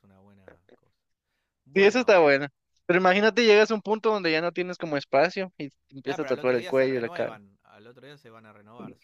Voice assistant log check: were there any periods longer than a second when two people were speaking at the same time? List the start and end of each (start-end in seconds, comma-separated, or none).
6.1-7.4